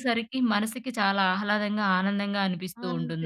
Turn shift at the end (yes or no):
yes